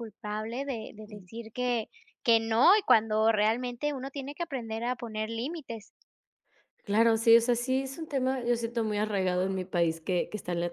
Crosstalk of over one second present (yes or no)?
no